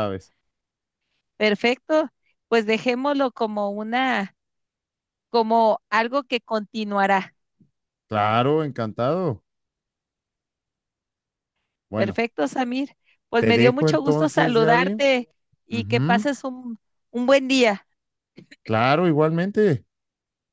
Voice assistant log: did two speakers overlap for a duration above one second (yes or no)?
yes